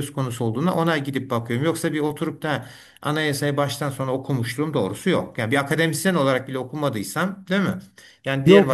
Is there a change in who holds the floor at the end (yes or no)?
yes